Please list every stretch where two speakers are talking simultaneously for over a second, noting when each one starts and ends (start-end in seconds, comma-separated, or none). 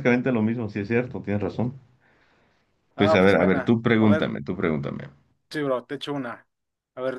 3.0-4.3